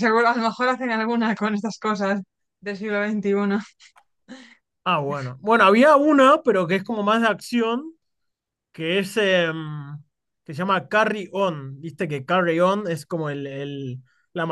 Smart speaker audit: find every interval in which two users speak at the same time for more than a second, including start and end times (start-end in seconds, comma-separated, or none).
none